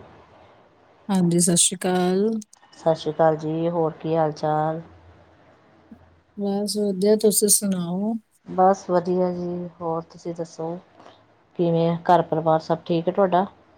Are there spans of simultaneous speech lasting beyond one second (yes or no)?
no